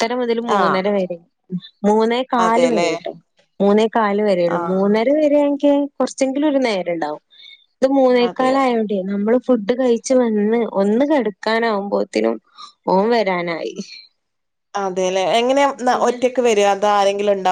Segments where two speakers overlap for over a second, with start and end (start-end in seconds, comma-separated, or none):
none